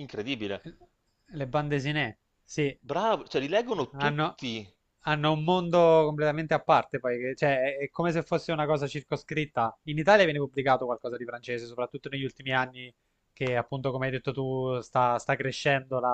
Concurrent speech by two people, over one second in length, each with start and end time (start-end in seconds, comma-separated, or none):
none